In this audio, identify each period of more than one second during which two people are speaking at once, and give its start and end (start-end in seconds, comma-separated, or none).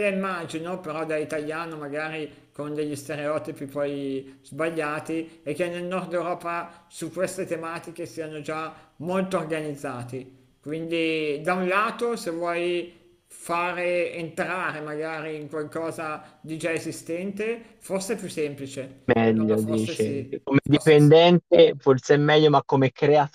19.1-21.1